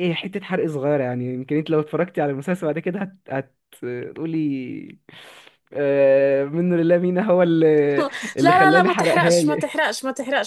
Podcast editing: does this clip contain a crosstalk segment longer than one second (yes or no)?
yes